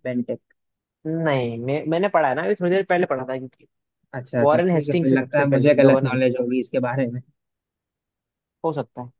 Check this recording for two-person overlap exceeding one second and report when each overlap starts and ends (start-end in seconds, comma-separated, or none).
4.4-6.3